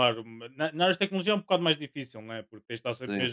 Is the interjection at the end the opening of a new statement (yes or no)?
no